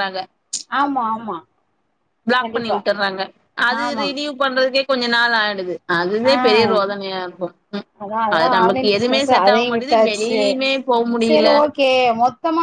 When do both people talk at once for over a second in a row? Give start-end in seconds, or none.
8.4-10.4